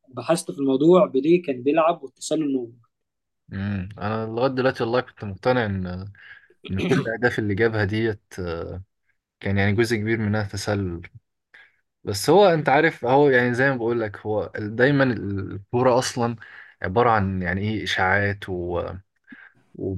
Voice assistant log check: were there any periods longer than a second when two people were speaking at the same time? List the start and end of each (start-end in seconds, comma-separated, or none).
none